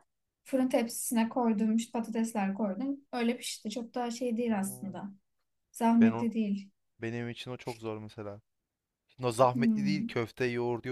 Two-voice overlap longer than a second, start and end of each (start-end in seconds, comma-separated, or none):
none